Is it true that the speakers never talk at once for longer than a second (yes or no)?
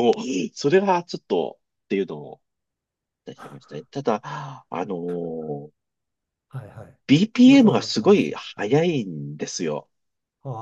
no